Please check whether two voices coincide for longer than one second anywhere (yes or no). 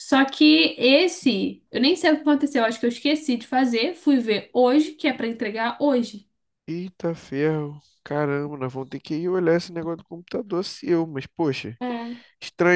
no